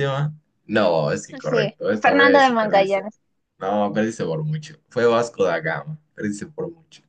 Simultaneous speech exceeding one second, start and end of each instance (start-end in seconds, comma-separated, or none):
1.4-3.1